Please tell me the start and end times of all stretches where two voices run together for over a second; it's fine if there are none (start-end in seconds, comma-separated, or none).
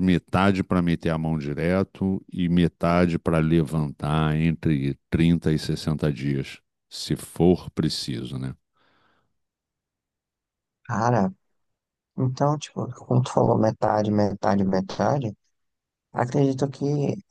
none